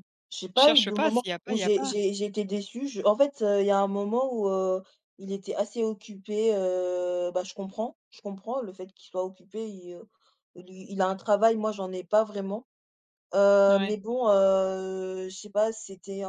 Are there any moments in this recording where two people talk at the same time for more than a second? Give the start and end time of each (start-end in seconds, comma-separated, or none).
0.5-1.9